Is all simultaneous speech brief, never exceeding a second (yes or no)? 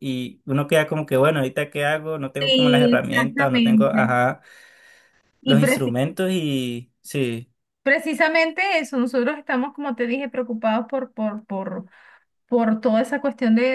no